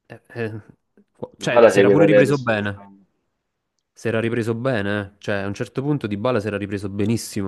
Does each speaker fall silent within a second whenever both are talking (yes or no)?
no